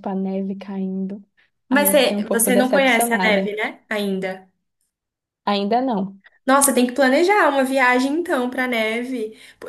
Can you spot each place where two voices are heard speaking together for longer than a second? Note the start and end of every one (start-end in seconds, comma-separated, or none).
1.7-3.5